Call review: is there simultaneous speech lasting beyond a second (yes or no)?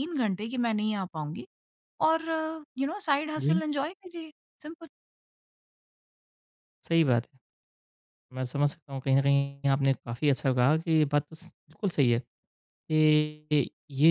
no